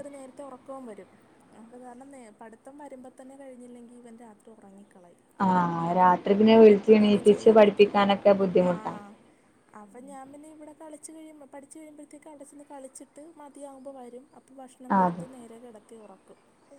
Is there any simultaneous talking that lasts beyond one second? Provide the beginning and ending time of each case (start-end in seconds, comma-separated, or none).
none